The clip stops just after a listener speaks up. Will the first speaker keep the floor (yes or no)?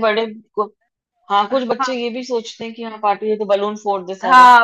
no